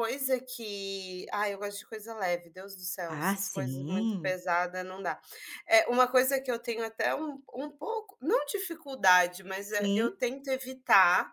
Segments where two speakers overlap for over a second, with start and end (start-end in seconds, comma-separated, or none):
3.1-4.3